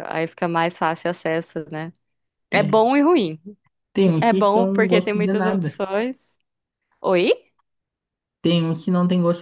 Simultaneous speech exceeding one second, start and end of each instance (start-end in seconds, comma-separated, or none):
4.2-5.8